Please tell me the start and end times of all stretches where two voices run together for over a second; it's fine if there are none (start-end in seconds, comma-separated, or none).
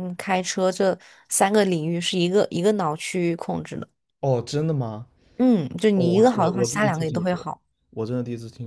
6.0-7.5